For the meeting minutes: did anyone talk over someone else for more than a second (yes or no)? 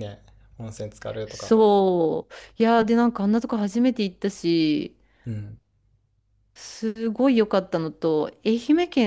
no